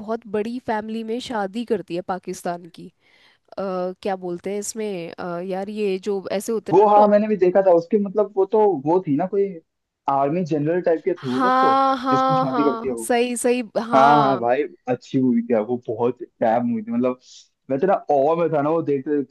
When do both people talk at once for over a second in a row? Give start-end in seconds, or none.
11.3-13.0